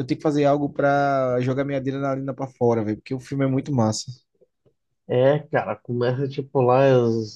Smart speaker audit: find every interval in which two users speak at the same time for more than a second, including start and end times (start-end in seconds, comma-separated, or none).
none